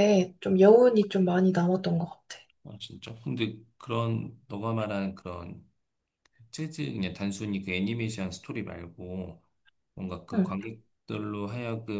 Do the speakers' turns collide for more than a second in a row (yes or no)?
no